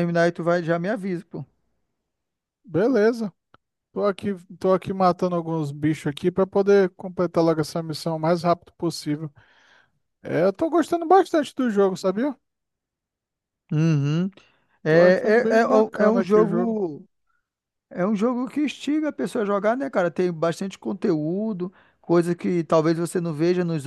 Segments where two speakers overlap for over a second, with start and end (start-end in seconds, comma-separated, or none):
14.9-16.8